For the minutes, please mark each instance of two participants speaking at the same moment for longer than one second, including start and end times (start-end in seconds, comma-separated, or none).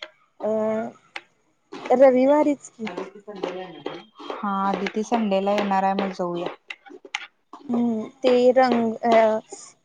none